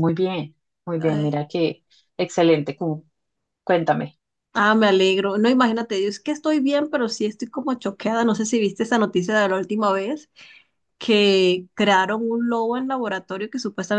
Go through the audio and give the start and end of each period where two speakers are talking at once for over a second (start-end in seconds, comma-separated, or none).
none